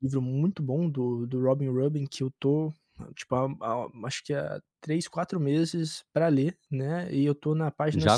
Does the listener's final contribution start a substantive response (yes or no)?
yes